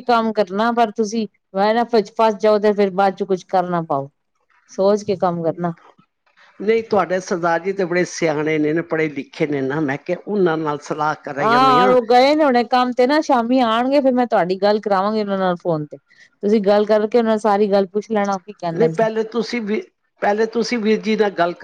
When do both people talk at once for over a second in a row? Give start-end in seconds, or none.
none